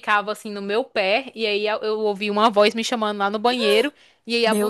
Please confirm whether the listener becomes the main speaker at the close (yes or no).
no